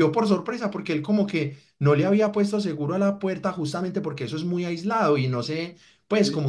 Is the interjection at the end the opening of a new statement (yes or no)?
no